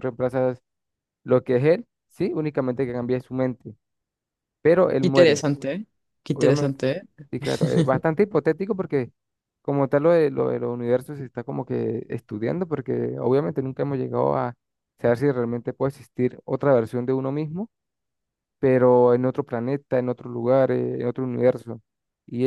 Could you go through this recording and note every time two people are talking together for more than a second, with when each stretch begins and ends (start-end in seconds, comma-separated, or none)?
none